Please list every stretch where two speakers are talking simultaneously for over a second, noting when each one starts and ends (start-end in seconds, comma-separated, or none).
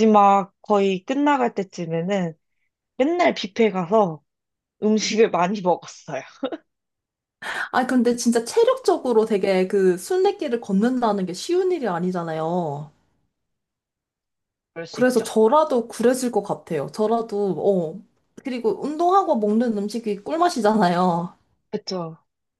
none